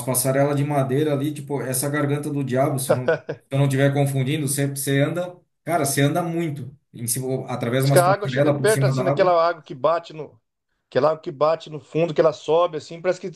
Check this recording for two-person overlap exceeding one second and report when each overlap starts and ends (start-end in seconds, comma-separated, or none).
7.8-9.3